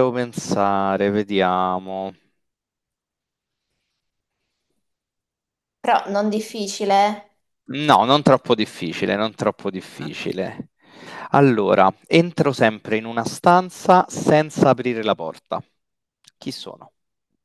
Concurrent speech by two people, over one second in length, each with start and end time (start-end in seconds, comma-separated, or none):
none